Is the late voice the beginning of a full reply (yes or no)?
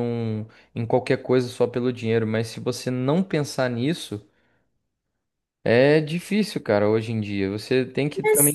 no